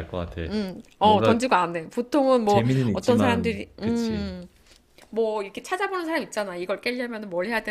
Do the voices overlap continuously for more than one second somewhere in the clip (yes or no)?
yes